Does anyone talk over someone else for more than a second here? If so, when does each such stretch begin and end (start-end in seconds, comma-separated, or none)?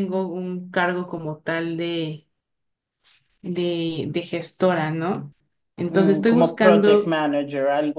5.9-7.1